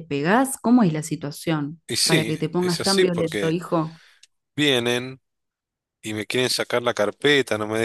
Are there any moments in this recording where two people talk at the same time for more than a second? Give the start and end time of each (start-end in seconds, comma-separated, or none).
1.9-3.6